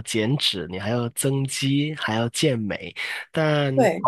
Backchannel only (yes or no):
yes